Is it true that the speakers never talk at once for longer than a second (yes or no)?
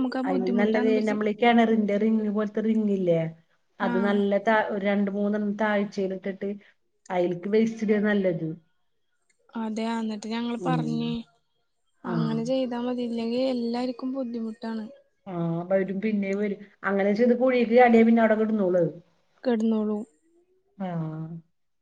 yes